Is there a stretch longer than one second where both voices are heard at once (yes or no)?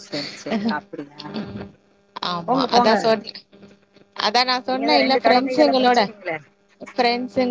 yes